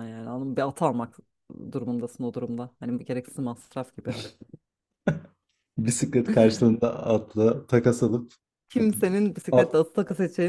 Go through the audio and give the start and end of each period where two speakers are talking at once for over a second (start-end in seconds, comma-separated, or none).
none